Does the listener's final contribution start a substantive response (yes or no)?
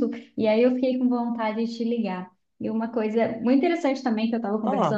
no